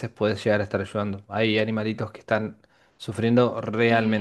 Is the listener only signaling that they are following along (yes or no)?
no